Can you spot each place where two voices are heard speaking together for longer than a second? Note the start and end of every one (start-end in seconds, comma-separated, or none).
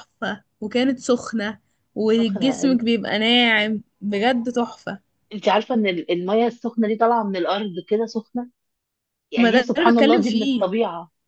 9.4-10.7